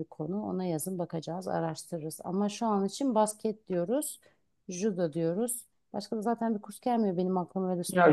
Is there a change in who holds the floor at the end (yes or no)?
yes